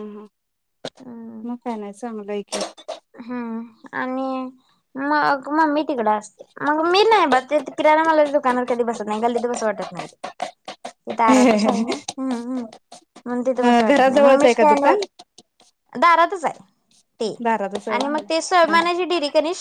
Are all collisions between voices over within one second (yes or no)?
no